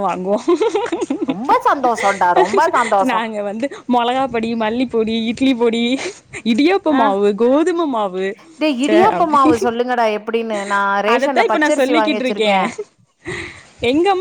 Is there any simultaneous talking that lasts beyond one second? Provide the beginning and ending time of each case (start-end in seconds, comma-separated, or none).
11.1-12.5